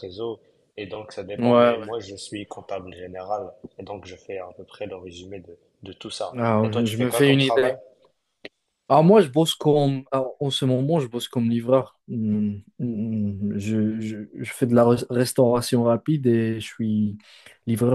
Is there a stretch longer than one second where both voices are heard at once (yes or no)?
yes